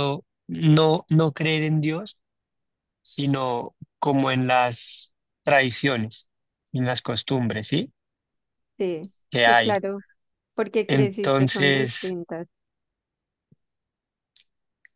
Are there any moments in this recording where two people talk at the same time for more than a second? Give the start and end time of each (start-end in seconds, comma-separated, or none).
10.9-12.2